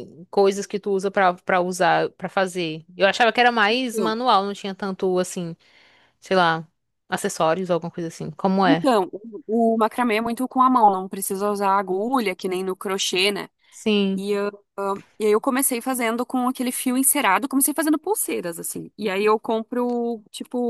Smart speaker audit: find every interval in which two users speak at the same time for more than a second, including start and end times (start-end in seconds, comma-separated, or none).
none